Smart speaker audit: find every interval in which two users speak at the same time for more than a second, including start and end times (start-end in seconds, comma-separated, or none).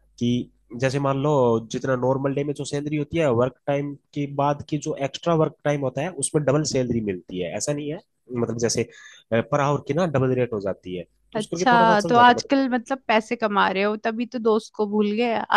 11.3-12.8